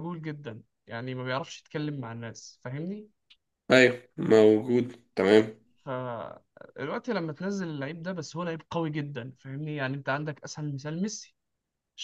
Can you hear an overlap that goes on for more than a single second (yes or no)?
no